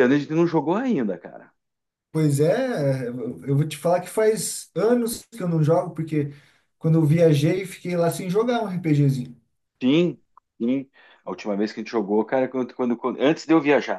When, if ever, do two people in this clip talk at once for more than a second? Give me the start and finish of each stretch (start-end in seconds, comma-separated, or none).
none